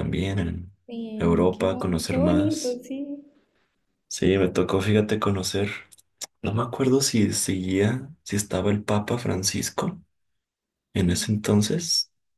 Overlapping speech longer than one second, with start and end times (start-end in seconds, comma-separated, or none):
1.2-2.8